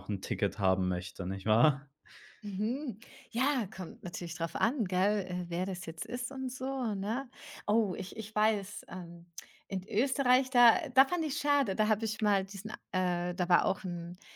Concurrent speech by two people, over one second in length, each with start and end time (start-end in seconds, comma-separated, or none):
none